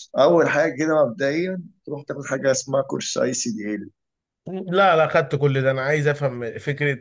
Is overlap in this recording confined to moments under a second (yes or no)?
yes